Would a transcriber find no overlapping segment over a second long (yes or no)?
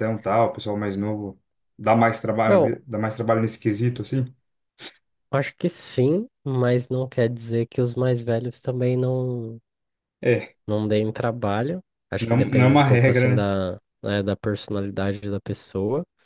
no